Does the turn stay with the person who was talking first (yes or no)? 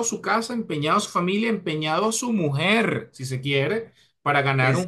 yes